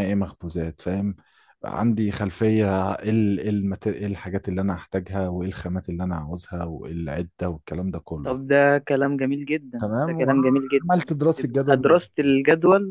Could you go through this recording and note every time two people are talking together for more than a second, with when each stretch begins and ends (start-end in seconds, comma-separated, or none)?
9.8-11.9